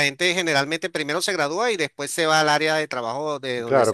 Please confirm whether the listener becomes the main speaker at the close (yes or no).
yes